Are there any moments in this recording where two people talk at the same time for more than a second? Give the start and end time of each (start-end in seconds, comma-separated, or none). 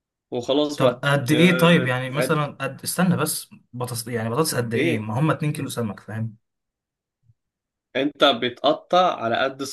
0.8-2.5